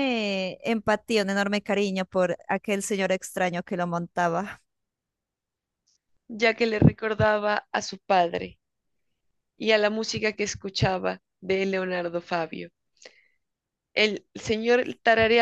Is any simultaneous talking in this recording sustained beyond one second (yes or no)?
no